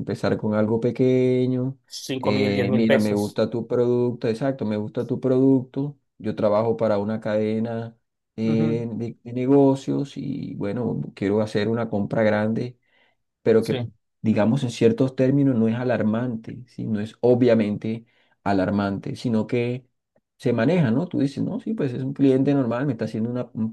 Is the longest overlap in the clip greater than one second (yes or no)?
yes